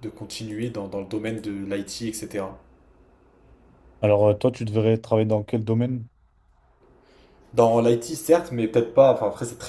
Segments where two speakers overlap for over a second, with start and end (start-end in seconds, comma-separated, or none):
none